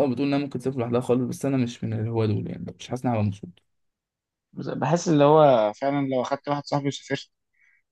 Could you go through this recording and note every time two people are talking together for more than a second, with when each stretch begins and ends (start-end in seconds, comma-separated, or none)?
none